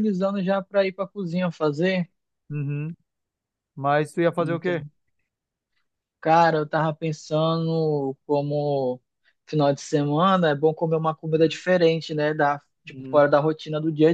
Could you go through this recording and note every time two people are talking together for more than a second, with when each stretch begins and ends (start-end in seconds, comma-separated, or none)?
none